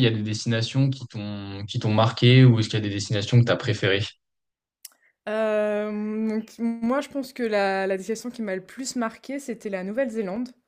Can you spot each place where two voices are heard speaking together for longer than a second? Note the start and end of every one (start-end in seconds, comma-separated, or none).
none